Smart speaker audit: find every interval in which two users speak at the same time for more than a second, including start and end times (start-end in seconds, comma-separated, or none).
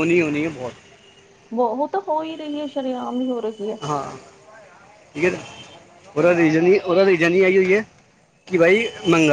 none